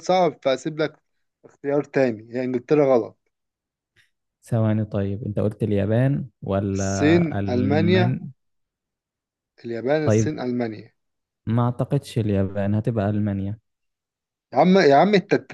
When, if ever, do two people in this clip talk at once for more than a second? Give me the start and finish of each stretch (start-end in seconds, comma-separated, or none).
6.7-8.2